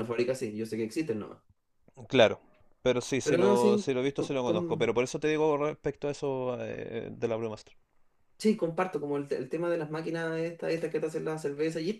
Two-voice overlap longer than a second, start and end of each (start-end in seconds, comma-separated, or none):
3.2-5.0